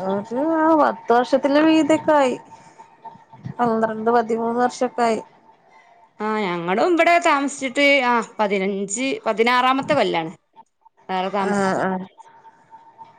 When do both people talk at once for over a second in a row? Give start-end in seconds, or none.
none